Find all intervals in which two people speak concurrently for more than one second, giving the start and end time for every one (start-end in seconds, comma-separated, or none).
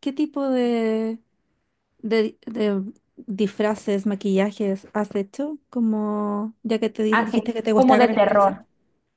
7.1-8.6